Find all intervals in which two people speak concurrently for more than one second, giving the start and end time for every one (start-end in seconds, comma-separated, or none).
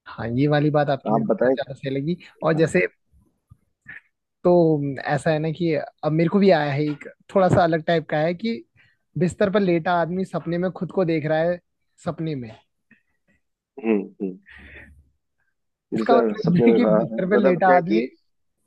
16.0-18.0